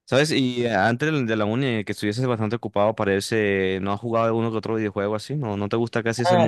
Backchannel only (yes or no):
no